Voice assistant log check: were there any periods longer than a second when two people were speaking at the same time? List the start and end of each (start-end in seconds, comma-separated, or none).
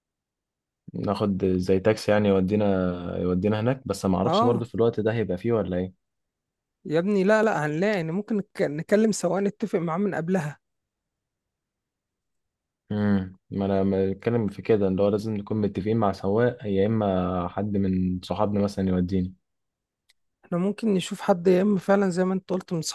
none